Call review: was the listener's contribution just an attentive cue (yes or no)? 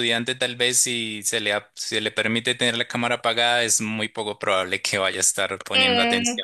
no